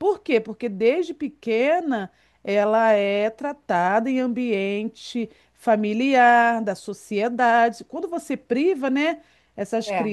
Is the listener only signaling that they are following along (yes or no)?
yes